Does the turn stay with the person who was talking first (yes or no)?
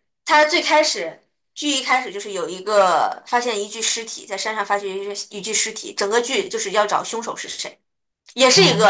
yes